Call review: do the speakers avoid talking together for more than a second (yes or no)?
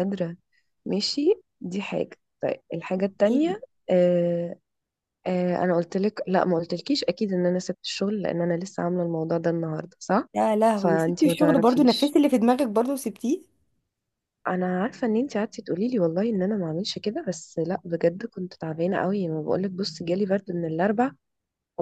no